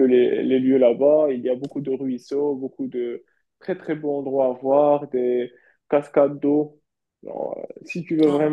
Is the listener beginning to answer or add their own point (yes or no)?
no